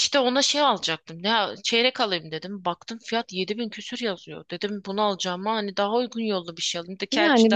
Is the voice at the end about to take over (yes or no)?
yes